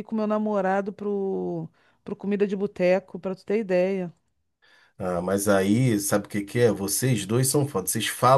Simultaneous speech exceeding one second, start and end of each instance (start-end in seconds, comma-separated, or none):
none